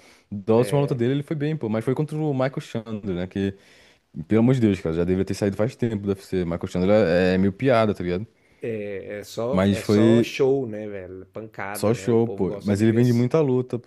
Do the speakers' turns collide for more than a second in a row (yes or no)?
yes